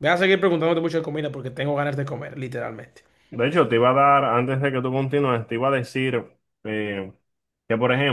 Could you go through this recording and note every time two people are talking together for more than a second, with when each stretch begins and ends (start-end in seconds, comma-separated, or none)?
none